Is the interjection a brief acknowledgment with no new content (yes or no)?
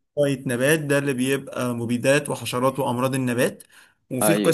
yes